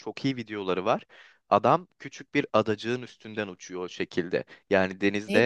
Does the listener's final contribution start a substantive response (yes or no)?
no